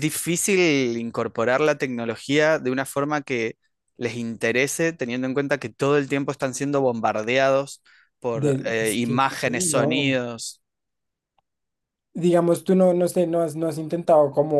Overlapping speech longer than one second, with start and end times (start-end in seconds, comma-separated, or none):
8.3-10.2